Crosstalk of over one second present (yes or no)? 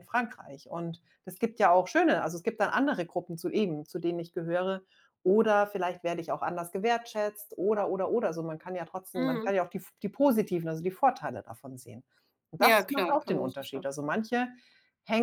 yes